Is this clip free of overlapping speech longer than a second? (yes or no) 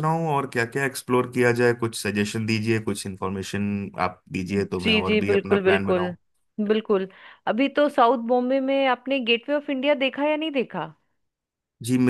no